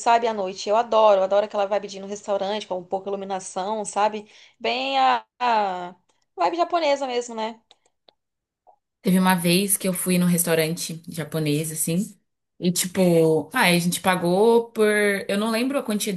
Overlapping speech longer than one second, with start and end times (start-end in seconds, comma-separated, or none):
none